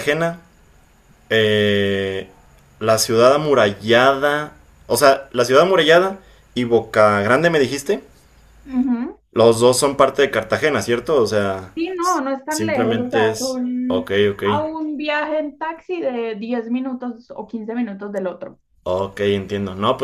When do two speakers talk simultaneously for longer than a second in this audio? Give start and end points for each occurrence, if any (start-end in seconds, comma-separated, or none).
11.8-14.4